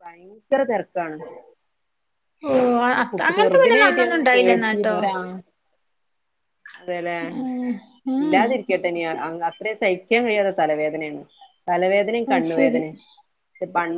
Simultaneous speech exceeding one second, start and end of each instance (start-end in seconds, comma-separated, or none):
3.1-5.0